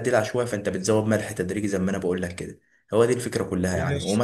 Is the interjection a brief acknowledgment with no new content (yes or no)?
yes